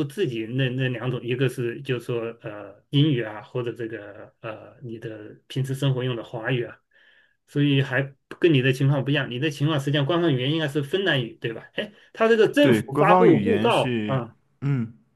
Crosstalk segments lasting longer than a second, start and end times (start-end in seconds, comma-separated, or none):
12.6-14.2